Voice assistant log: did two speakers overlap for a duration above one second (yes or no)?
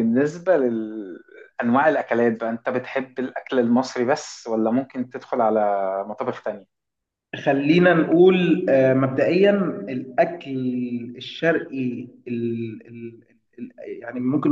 no